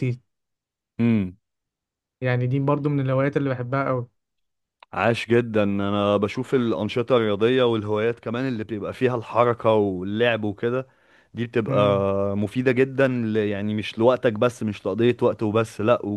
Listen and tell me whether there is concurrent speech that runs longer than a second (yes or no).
no